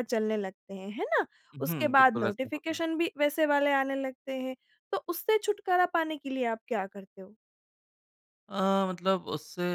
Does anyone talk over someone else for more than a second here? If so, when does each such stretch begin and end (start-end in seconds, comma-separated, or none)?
1.6-2.8